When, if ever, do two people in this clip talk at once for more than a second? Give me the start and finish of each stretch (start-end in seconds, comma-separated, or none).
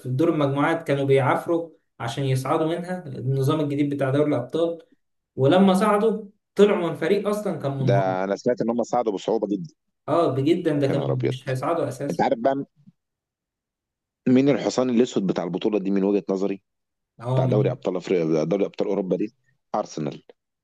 none